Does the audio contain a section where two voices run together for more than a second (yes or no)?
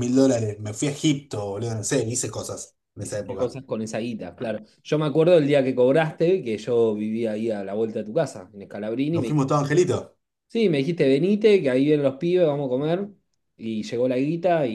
no